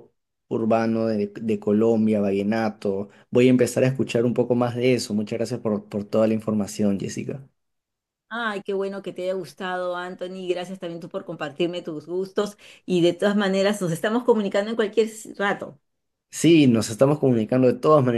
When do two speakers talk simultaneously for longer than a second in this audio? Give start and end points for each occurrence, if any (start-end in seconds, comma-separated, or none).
none